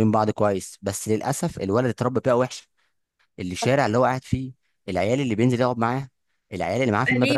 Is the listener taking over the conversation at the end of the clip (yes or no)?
yes